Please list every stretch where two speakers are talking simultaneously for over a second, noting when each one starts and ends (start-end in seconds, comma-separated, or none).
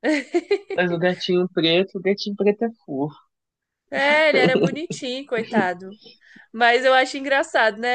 none